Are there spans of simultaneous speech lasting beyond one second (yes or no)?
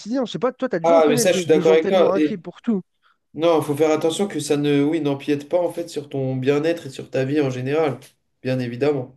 yes